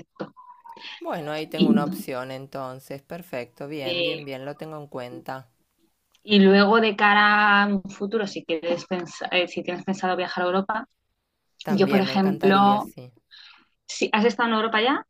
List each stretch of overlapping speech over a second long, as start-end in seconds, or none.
11.7-12.9